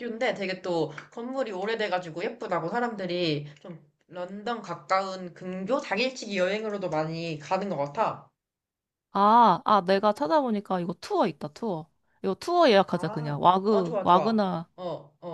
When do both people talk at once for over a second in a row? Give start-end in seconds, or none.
12.9-14.4